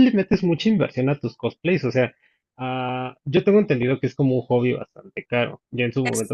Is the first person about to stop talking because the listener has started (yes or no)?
no